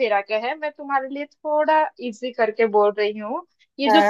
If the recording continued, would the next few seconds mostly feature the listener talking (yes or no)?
no